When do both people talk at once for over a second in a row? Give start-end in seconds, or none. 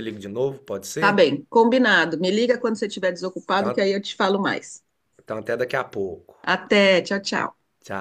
none